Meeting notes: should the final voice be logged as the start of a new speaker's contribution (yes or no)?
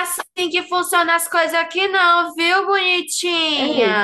yes